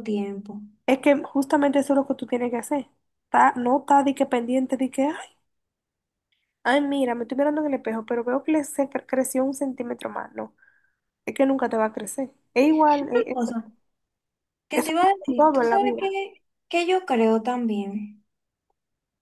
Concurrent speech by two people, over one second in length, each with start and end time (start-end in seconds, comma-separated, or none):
14.7-16.2